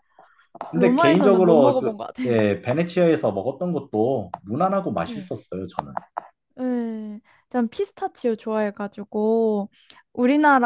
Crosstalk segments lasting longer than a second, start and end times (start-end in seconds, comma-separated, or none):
0.7-2.3